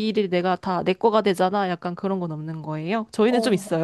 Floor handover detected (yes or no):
yes